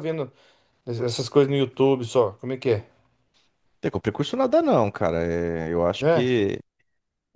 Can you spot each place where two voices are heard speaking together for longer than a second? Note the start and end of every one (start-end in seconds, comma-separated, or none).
none